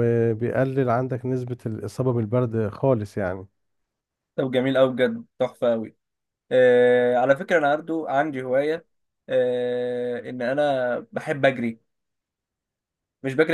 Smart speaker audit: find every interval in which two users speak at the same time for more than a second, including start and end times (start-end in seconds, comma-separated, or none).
none